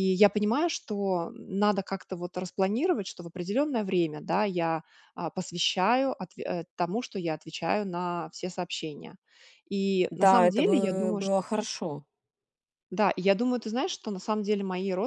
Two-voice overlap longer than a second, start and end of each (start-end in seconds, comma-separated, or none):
10.1-11.3